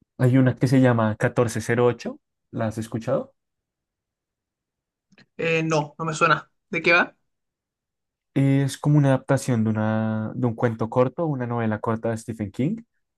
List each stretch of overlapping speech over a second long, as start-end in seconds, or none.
none